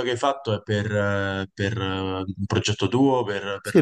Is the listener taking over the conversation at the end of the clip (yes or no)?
yes